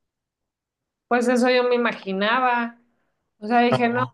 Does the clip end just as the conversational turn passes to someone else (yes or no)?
no